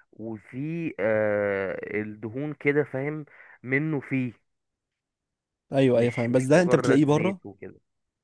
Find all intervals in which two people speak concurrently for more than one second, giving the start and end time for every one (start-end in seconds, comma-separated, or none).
5.9-7.4